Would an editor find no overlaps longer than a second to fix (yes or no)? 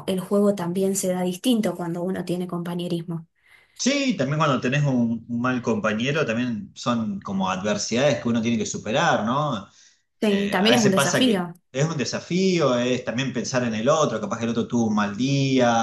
no